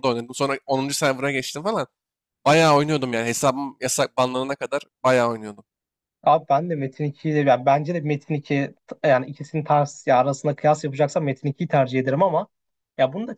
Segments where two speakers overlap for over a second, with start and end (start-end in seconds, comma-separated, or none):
none